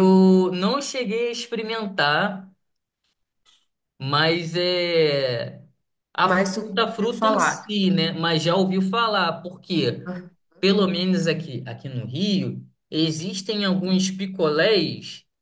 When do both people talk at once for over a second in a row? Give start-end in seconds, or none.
6.2-7.8